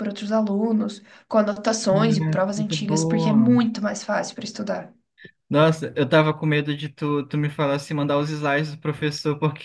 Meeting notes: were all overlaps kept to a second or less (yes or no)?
no